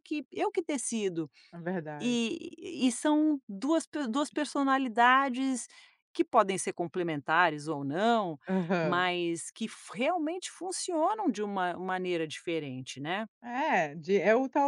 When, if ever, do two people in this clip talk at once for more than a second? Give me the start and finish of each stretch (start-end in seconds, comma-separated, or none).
none